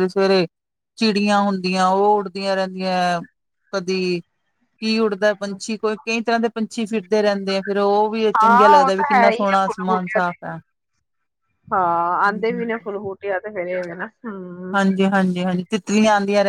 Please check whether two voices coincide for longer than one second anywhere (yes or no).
yes